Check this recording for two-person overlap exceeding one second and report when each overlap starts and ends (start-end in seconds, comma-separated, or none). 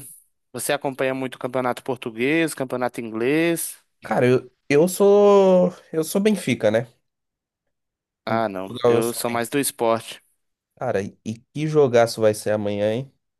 8.3-9.6